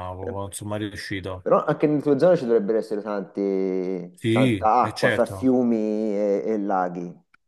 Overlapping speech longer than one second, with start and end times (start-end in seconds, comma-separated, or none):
4.2-5.5